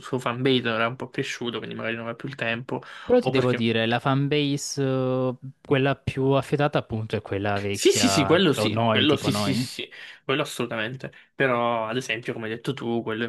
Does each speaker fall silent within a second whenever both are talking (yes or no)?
no